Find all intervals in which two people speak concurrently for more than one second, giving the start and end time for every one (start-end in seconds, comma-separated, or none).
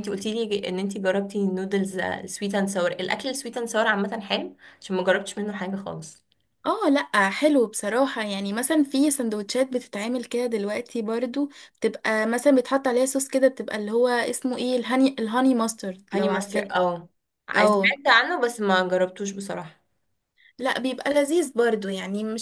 none